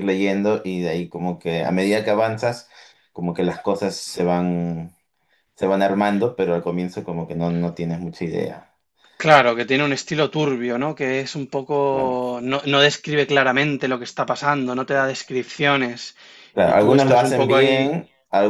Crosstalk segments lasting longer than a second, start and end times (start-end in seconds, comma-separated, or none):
16.6-17.8